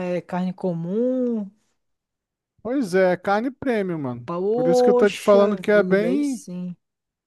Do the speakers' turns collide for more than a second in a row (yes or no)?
yes